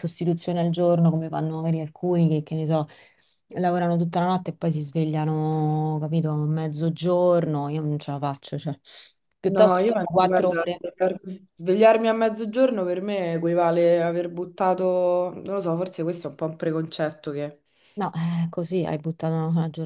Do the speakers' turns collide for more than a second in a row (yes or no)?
yes